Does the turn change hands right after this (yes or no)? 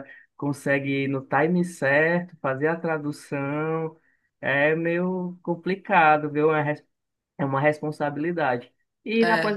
no